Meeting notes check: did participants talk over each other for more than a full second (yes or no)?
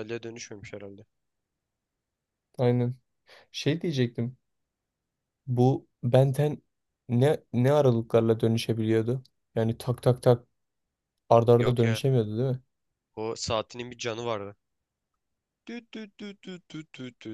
no